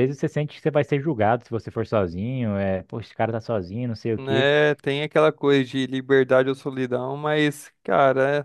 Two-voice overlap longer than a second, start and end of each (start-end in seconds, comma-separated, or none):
none